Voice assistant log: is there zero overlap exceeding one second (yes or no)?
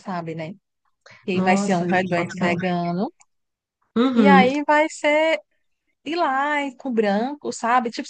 no